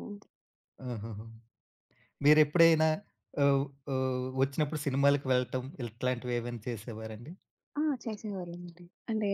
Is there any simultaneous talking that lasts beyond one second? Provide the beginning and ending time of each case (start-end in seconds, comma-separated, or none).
none